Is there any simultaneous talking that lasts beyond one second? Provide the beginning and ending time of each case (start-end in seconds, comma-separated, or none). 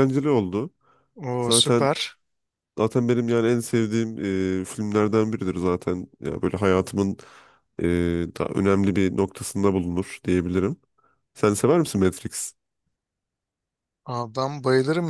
none